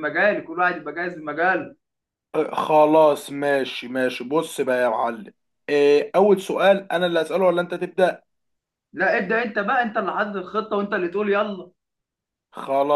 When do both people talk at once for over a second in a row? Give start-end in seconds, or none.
none